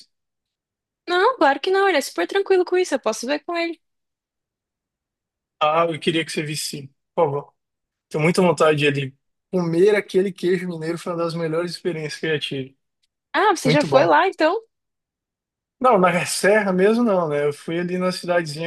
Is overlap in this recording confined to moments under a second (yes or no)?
yes